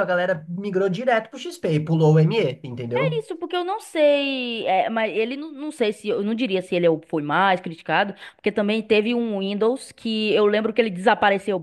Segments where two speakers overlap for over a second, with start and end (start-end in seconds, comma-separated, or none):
none